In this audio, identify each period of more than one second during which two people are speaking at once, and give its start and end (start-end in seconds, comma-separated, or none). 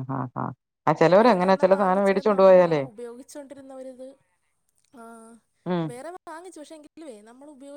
1.2-2.8